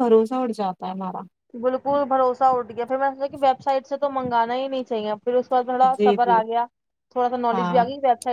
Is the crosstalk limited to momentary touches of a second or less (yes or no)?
yes